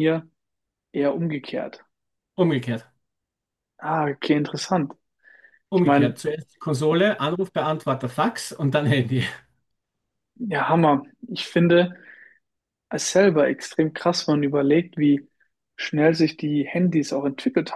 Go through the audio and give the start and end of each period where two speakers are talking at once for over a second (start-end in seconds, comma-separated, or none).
none